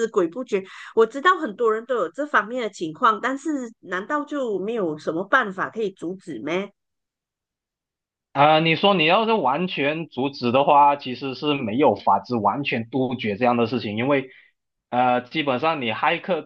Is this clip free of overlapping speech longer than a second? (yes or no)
yes